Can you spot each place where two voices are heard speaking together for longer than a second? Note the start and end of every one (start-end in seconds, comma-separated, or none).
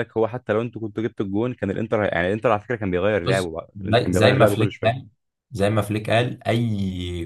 3.2-5.1